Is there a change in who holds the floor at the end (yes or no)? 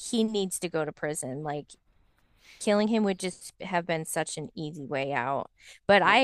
no